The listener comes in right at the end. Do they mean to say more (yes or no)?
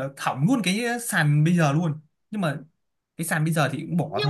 yes